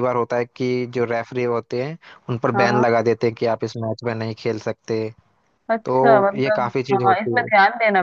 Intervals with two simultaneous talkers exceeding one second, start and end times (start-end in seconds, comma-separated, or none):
5.8-7.5